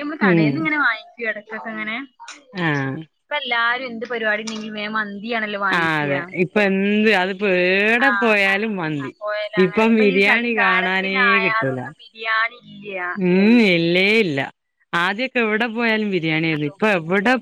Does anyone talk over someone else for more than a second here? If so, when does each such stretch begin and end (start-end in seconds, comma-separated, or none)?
none